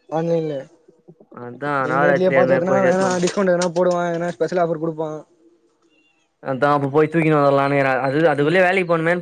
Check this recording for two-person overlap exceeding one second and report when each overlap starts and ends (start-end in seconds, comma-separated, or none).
1.8-3.2